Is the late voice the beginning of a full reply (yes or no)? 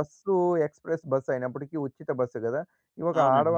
no